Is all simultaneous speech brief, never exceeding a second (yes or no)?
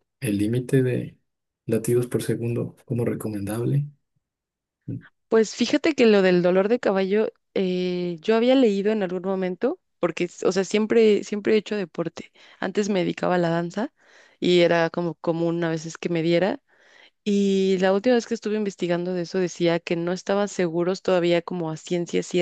yes